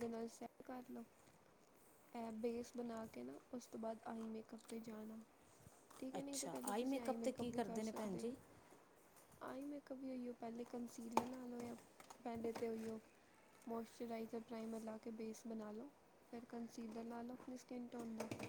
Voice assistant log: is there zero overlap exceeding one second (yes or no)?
no